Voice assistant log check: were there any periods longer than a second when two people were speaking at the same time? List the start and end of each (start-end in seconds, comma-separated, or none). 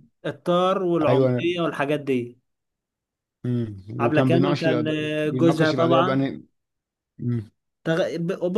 4.0-6.2